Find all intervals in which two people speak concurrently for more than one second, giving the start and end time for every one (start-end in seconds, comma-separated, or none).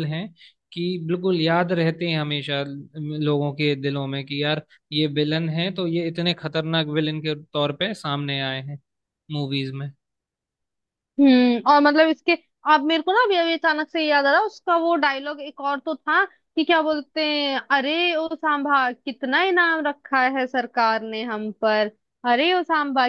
none